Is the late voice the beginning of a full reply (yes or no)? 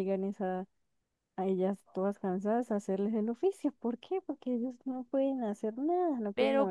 yes